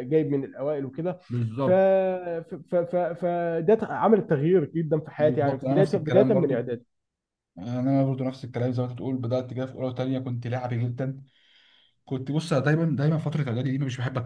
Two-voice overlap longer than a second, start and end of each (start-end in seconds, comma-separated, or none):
5.2-6.6